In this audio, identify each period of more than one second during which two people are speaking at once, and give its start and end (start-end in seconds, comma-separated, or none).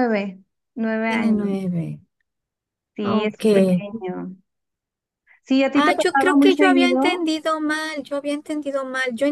5.8-7.3